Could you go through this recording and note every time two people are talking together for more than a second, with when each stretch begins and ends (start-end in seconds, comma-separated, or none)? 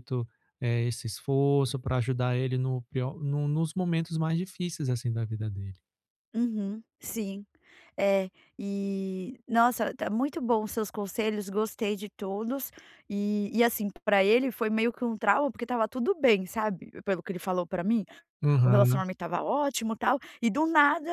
none